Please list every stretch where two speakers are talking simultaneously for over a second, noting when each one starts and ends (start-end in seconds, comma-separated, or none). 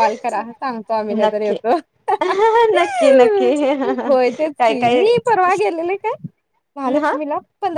none